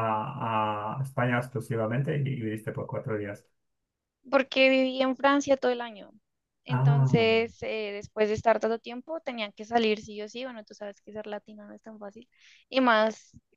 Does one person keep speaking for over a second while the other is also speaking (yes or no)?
no